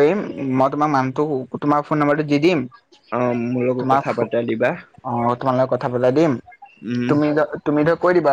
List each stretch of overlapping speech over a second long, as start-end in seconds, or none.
none